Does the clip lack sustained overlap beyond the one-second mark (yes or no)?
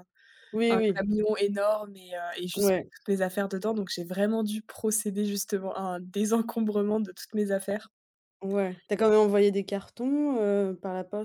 yes